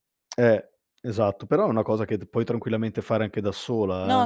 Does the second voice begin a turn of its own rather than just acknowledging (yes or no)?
yes